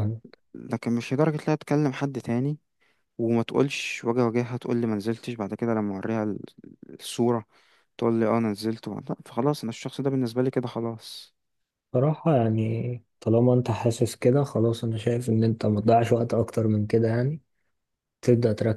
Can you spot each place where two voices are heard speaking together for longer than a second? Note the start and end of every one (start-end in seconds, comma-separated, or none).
none